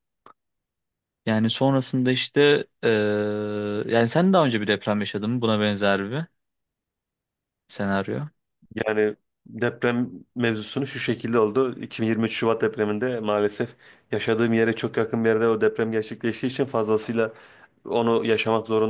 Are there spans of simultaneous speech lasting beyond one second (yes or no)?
no